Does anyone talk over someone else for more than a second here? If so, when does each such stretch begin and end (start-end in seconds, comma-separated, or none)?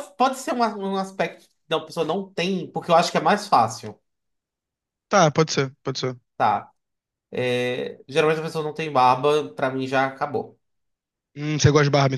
none